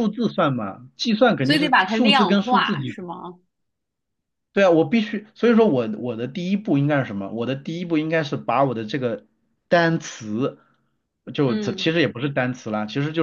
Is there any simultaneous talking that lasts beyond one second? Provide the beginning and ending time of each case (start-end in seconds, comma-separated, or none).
1.4-2.8